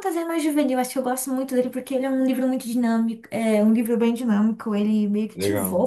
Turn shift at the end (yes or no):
no